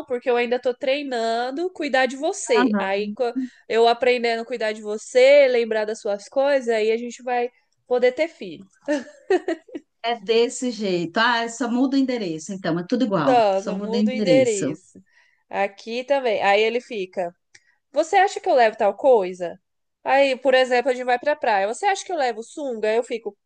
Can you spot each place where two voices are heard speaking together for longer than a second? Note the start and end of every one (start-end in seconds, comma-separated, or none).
13.3-14.8